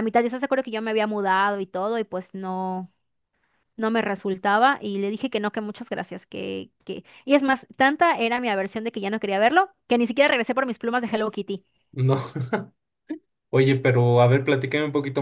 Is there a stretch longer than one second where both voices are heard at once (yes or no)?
no